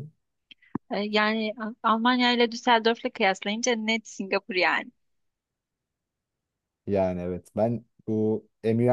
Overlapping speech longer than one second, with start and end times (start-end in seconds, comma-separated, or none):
none